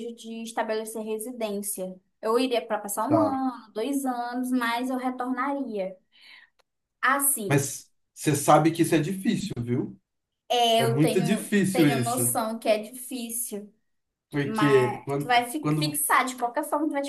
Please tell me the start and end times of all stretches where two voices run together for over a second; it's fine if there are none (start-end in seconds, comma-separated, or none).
10.8-12.4, 14.4-16.0